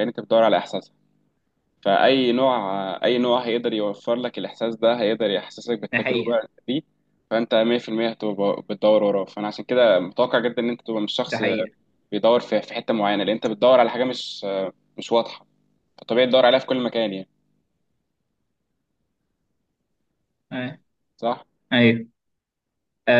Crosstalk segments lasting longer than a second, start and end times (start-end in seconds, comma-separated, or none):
none